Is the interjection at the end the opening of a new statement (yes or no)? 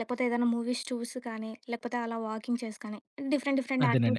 yes